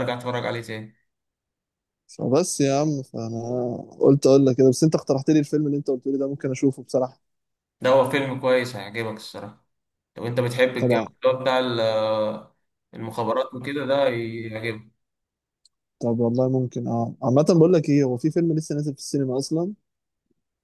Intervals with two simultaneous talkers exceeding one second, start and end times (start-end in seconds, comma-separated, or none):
none